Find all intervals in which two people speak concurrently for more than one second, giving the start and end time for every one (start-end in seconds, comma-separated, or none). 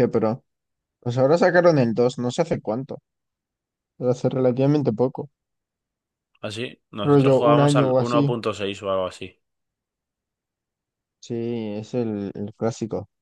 7.0-8.3